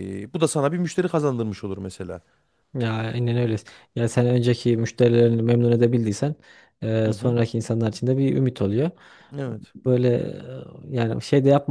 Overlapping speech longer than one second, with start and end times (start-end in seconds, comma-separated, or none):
none